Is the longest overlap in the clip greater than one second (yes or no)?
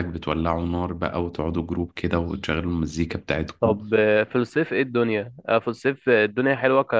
no